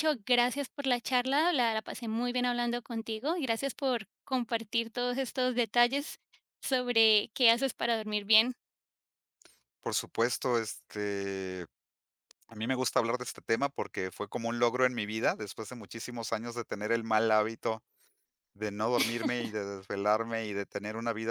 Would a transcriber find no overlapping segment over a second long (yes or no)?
yes